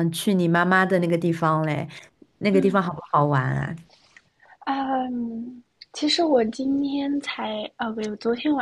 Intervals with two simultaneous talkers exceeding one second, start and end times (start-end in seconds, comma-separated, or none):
none